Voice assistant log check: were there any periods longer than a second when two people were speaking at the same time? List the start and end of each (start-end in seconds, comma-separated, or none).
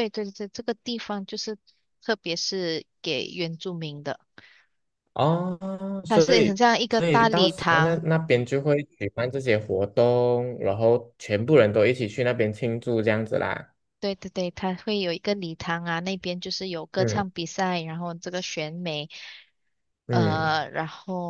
6.1-8.0